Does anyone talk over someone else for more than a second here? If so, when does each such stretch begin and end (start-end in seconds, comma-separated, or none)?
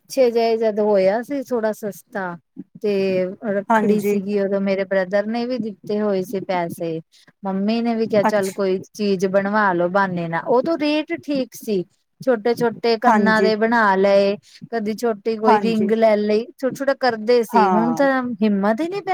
none